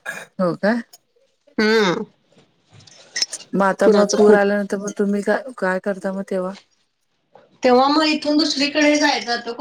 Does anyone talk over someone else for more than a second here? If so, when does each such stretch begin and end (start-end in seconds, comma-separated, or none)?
none